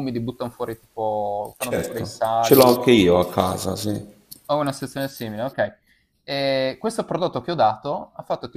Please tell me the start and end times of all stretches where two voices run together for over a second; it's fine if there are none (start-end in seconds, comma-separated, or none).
1.6-2.8